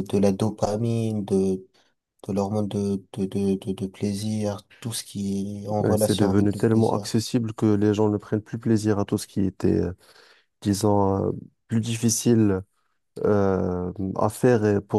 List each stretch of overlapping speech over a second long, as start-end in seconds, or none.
5.8-7.1